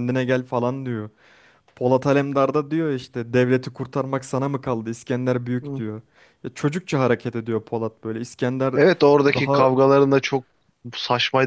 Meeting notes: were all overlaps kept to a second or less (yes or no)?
yes